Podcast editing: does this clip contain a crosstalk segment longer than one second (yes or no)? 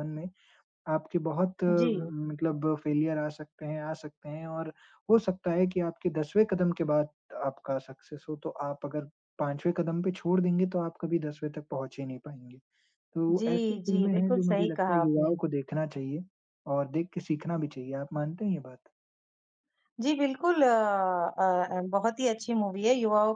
yes